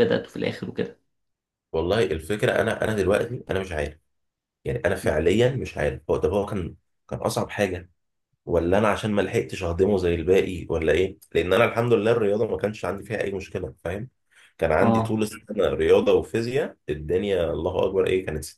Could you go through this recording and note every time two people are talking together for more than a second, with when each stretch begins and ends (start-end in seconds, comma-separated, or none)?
none